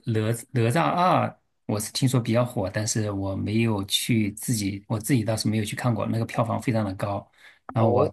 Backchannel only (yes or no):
yes